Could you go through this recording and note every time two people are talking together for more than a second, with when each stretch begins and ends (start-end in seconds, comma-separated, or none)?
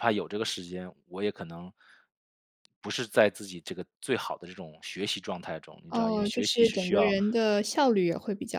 5.9-7.1